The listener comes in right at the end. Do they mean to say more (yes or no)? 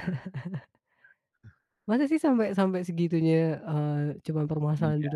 yes